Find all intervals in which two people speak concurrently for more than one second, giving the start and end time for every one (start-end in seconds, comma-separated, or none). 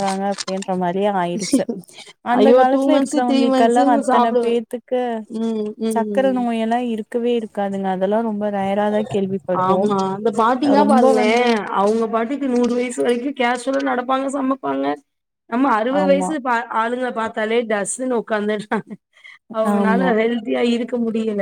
2.4-4.5